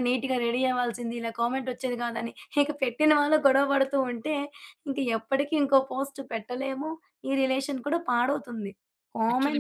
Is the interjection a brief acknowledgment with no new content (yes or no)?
yes